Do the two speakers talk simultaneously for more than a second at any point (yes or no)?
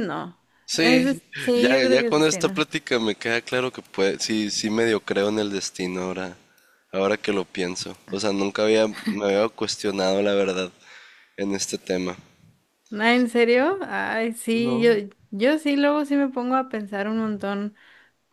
yes